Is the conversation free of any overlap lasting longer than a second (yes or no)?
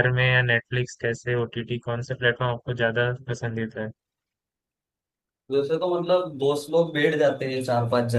yes